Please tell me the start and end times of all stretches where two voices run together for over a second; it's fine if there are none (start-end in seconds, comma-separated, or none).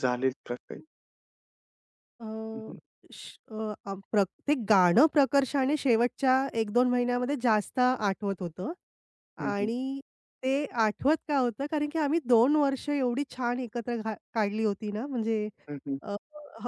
none